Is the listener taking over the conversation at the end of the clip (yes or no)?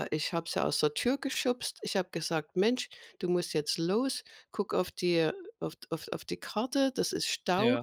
no